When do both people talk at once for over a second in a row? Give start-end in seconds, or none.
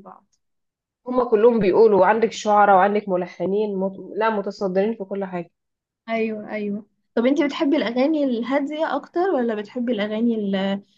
none